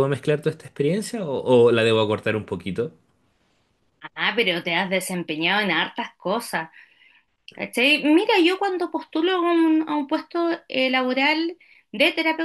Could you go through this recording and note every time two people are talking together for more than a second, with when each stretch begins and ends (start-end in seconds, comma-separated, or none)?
none